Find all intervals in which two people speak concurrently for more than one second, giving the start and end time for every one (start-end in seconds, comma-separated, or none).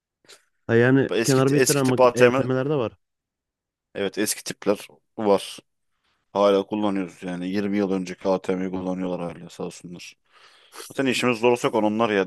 1.1-2.5